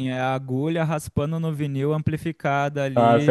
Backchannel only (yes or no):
no